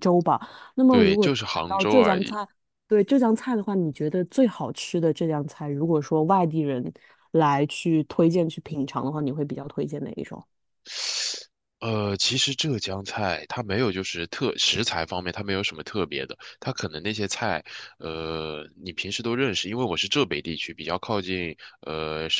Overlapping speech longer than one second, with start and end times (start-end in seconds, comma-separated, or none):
0.9-2.4